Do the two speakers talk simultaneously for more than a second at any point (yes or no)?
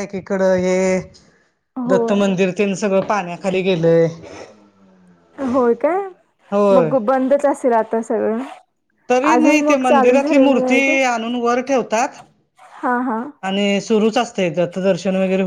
yes